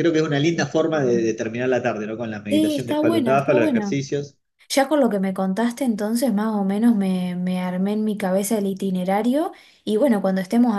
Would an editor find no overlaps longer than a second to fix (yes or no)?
no